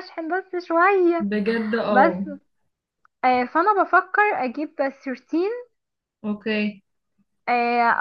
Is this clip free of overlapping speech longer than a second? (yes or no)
yes